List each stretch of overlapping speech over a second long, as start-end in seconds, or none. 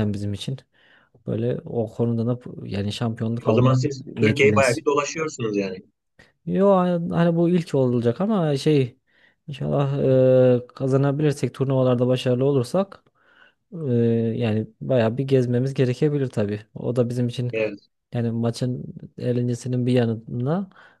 3.4-4.8